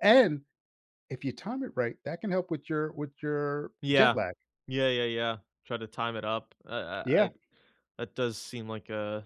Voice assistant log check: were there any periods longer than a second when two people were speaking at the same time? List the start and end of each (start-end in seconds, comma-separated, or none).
none